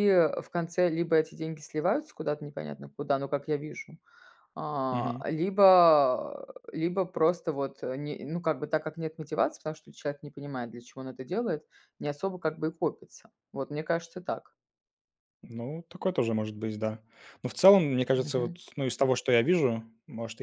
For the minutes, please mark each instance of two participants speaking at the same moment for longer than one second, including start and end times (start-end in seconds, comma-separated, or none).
none